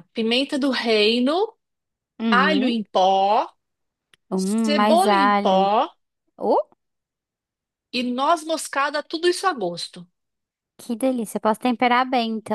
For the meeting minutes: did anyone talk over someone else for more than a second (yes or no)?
yes